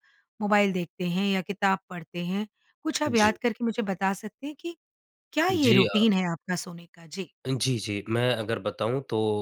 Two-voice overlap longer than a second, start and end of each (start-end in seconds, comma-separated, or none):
none